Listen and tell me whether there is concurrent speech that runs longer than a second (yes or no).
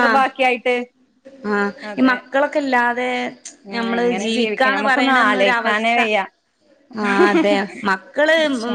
yes